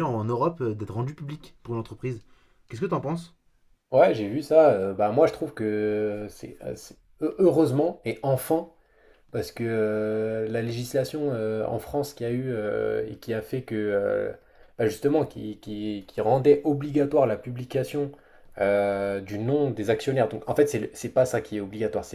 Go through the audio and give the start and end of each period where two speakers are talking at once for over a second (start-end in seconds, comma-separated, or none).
none